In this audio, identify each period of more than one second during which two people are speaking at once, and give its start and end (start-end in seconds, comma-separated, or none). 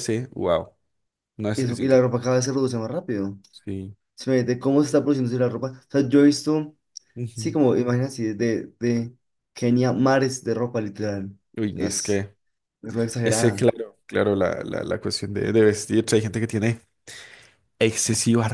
none